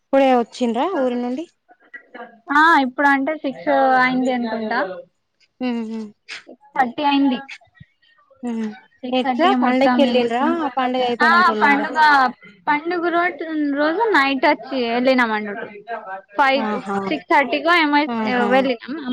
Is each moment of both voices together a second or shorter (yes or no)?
yes